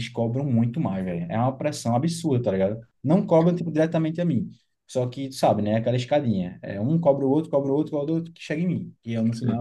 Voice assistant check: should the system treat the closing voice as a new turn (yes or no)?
yes